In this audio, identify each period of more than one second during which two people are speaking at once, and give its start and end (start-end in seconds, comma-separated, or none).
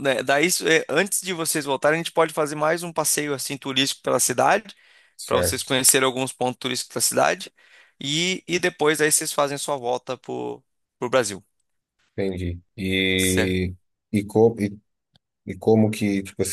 none